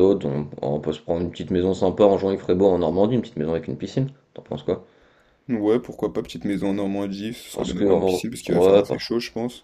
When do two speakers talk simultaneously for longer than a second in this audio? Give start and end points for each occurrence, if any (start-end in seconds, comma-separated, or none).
7.5-9.0